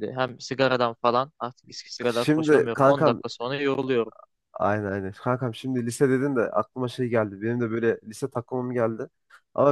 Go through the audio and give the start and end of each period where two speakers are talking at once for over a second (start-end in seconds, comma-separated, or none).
2.0-3.2